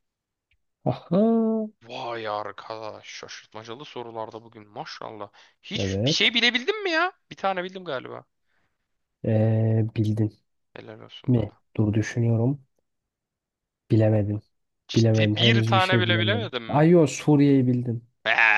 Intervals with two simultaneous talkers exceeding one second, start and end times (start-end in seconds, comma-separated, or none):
14.9-16.9